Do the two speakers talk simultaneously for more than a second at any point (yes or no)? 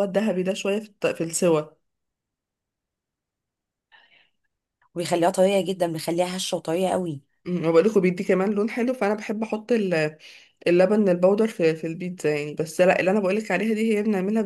no